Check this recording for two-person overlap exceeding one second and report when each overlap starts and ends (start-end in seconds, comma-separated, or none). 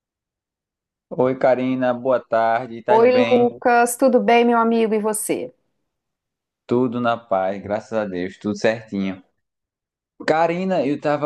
none